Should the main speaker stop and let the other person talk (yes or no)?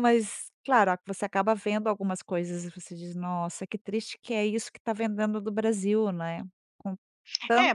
yes